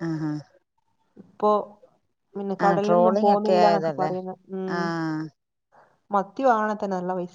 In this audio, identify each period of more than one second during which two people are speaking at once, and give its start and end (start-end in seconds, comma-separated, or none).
2.7-4.1